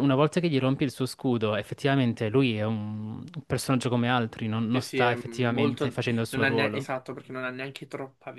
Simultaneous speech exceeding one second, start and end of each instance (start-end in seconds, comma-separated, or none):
4.7-6.9